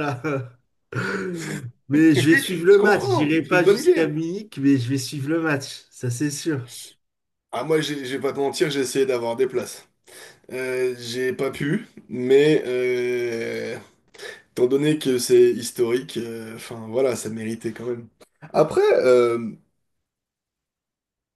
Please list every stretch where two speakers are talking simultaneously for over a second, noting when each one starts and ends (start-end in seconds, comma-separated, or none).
2.7-4.1